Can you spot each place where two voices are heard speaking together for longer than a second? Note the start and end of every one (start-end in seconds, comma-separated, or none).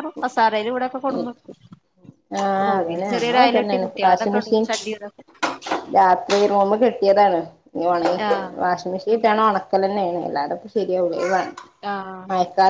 2.7-4.6